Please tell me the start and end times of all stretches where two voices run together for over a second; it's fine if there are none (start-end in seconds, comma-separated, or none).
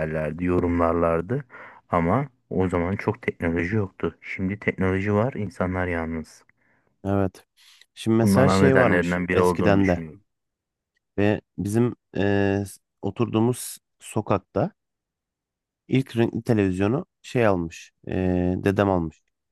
8.2-10.0